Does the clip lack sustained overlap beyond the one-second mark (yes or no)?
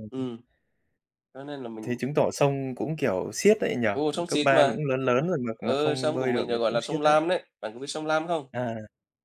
no